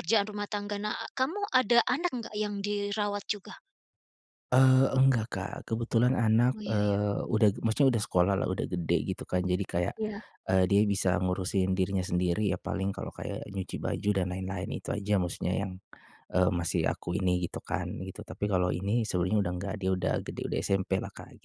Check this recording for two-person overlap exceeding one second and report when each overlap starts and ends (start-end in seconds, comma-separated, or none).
none